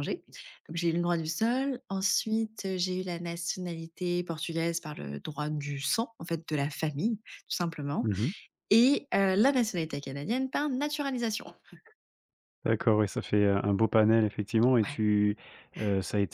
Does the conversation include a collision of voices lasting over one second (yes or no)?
no